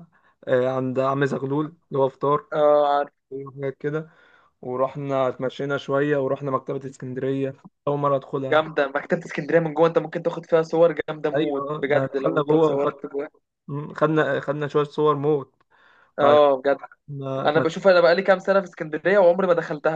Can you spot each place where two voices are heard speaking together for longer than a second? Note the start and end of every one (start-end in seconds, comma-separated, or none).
11.3-12.9